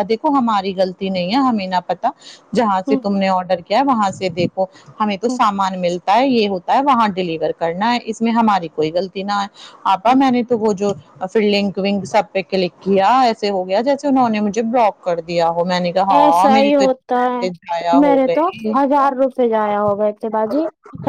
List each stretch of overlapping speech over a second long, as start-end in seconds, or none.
16.2-18.8